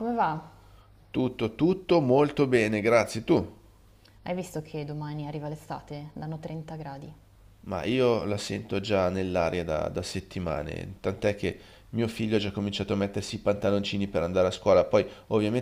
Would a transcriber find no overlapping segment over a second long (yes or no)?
yes